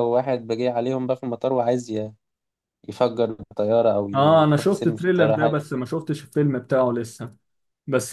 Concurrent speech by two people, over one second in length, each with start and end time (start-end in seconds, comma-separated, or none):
4.1-5.6